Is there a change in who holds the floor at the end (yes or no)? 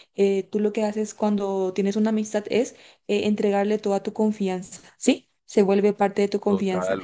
yes